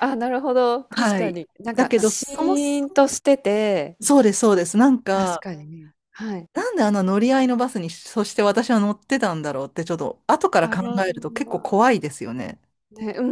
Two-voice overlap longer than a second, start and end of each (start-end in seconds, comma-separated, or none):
0.9-3.0